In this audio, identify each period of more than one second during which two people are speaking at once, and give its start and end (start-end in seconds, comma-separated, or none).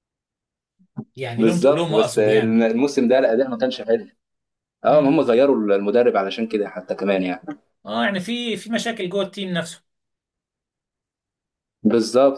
1.4-2.6